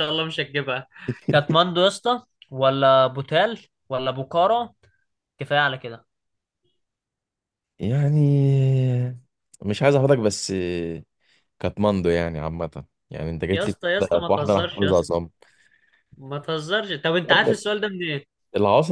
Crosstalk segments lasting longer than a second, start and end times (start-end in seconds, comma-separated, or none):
13.5-15.1